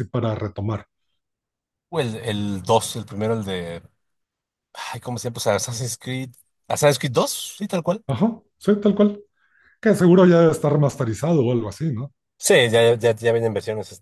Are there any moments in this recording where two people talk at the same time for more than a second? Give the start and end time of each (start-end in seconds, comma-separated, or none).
none